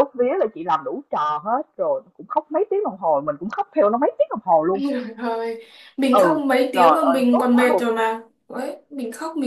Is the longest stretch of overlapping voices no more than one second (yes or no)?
no